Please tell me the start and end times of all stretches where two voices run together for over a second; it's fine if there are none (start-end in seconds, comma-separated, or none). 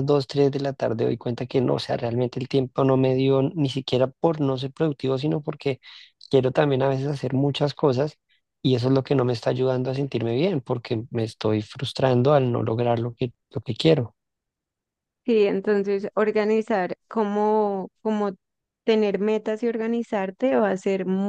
none